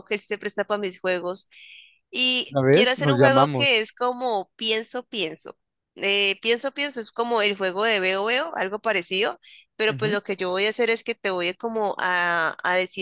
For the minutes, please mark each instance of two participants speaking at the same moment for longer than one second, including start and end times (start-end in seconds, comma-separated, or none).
2.5-3.8